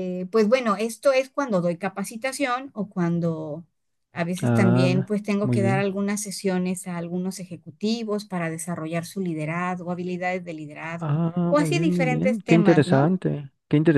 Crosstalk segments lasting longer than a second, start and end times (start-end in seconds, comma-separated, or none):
4.4-5.9, 11.0-13.1